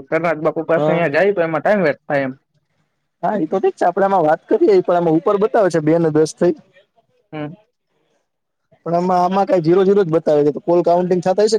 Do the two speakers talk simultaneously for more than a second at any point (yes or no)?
no